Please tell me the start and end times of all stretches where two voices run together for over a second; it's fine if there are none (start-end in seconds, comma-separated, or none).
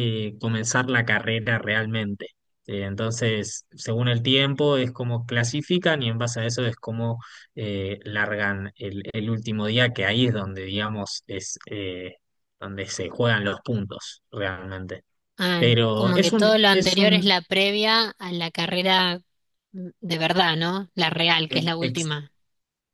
15.6-17.3